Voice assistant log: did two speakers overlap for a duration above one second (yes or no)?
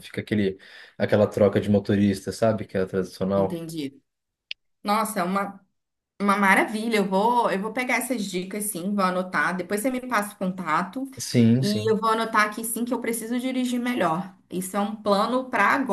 no